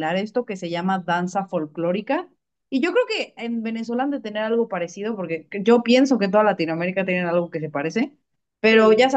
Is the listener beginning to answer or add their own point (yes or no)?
no